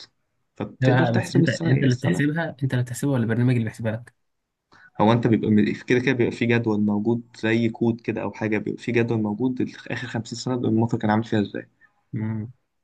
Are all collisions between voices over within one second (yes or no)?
no